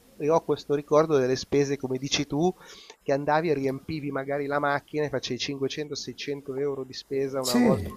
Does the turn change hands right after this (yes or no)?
no